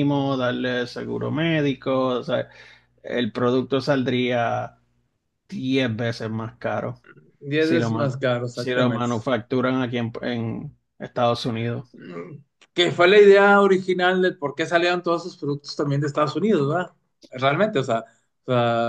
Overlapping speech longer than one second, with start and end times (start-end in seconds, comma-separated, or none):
7.6-9.1